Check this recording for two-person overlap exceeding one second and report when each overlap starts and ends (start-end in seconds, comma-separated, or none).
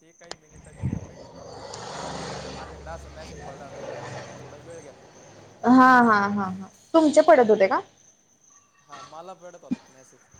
none